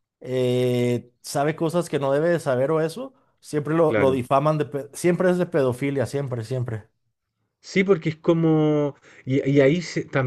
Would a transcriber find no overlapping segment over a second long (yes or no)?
yes